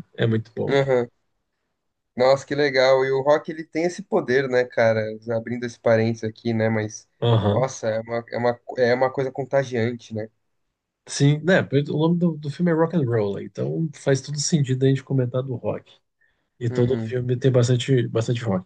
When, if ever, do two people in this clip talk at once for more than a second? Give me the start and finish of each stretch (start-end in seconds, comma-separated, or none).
none